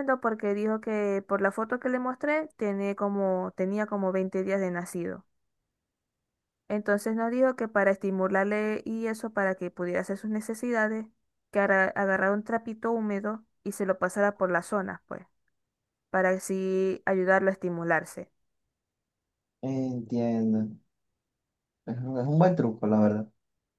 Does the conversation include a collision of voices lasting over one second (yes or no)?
no